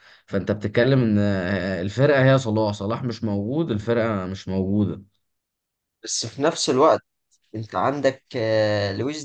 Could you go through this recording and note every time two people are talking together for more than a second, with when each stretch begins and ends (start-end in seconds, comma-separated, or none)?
none